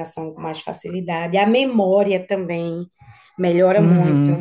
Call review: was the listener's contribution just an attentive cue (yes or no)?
yes